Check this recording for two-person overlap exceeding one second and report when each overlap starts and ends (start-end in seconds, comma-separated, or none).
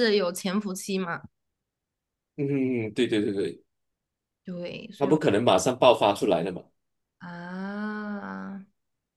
none